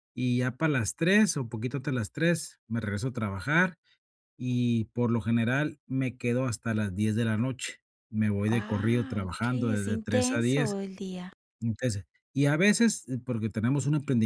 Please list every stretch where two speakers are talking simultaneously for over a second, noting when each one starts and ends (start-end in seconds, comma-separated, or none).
8.4-10.7